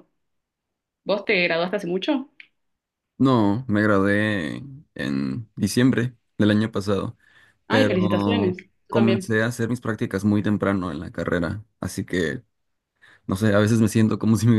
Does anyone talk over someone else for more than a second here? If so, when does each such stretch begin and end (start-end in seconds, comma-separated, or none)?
7.7-9.3